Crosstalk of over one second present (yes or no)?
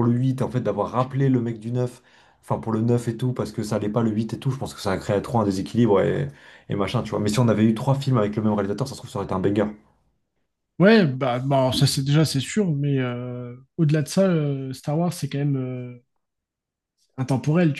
no